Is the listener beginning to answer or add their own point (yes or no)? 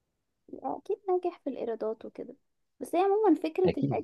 no